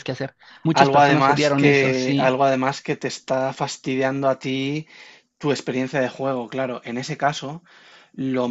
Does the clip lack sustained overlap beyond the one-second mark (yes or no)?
no